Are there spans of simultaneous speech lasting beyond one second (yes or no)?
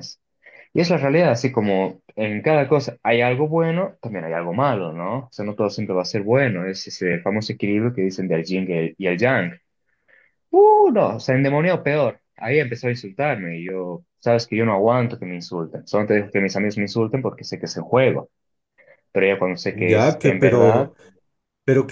yes